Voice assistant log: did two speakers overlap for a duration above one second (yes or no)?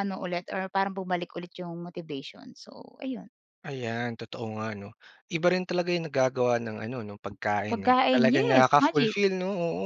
yes